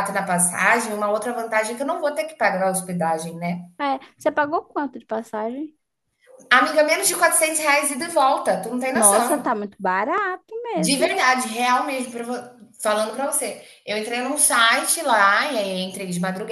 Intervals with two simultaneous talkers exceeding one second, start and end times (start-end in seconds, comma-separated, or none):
none